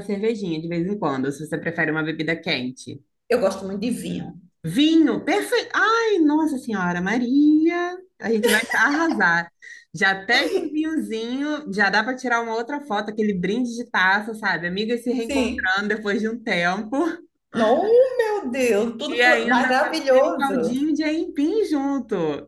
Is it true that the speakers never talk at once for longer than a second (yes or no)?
no